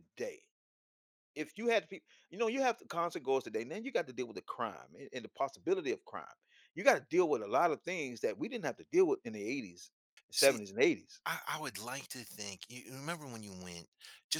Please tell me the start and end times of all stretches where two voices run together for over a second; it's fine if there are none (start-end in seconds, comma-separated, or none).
none